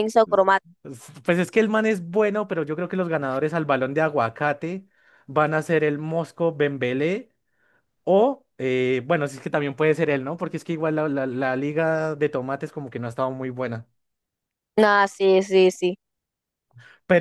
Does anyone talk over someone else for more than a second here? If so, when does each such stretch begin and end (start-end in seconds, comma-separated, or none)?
none